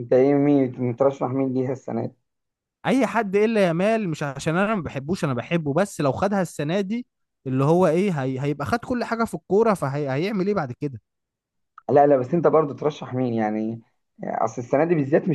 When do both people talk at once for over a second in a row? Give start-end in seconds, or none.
none